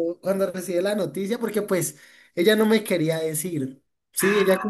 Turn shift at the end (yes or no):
no